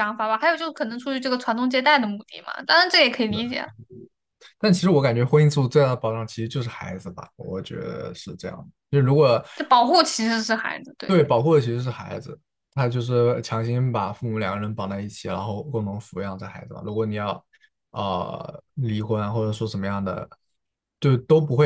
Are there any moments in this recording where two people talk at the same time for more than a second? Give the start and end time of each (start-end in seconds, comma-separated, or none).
none